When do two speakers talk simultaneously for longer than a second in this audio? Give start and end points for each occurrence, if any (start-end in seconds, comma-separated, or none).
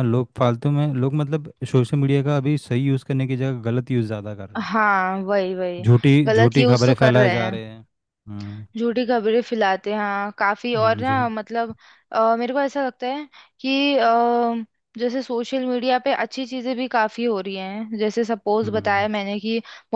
6.3-7.5